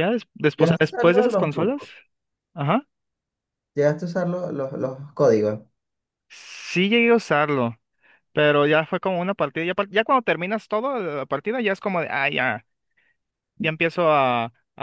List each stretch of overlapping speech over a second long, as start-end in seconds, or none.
0.6-1.8